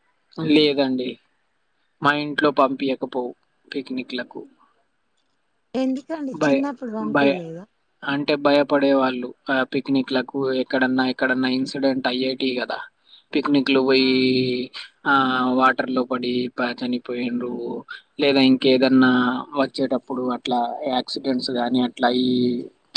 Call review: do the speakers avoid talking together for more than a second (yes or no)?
yes